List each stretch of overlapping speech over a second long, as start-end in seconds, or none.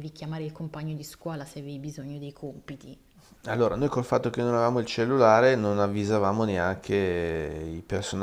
none